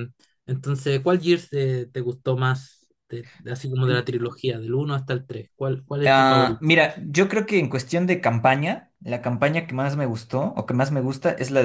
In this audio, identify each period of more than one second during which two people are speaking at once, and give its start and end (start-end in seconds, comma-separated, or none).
none